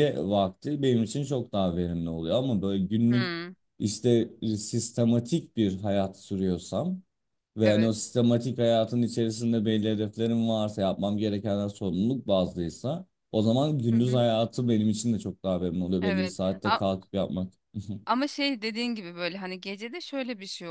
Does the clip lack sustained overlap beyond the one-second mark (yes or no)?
yes